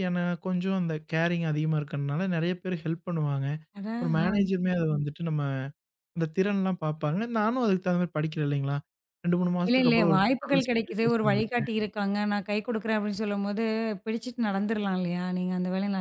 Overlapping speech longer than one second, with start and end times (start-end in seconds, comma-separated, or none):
9.7-11.7